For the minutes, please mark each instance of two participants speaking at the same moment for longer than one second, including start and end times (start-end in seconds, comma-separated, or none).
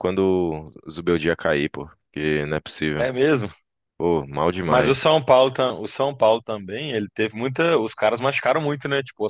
none